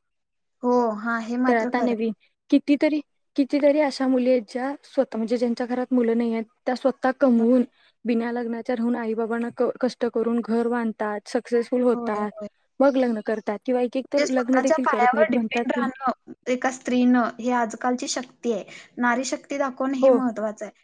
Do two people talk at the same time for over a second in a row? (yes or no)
no